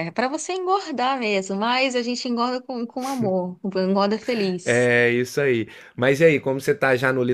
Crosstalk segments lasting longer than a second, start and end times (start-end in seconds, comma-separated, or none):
none